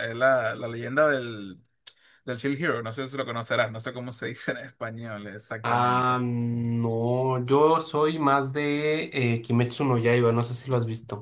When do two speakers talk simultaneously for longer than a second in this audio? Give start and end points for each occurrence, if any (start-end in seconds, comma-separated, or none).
none